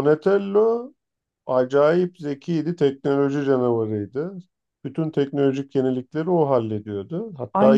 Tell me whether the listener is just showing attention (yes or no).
no